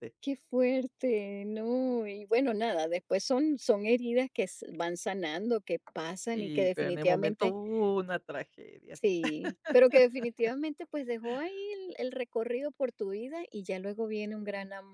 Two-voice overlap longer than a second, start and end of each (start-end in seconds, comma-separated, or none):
6.3-7.5